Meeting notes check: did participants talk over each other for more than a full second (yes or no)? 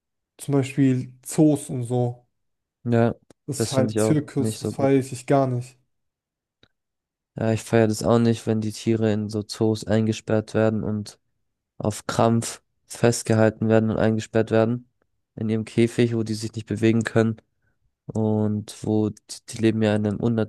yes